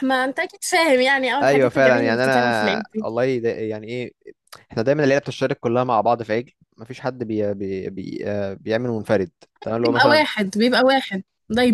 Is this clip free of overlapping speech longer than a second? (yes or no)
no